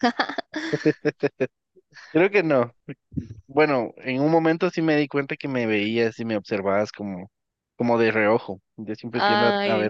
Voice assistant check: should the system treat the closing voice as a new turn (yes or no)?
no